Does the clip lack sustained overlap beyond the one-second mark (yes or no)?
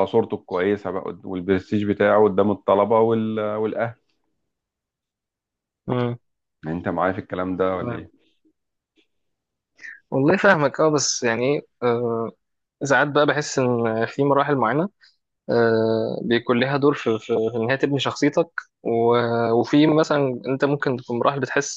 yes